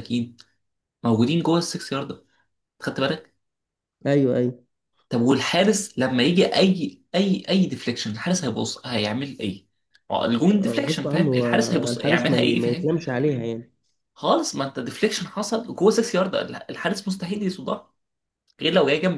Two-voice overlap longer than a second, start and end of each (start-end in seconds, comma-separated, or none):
10.5-12.9